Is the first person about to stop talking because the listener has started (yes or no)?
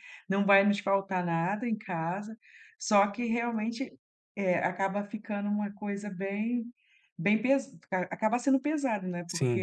no